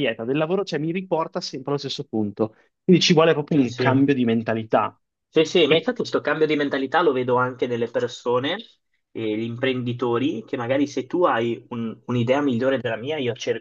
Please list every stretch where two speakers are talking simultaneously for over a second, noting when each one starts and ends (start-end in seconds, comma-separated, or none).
none